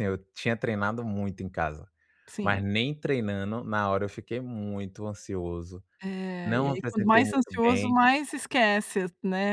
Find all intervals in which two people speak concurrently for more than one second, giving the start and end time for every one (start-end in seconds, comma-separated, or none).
6.4-7.9